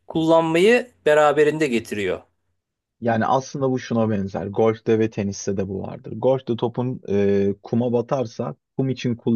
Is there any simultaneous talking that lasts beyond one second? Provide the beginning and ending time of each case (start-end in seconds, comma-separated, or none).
none